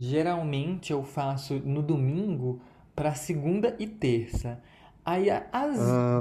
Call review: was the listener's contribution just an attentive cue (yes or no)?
yes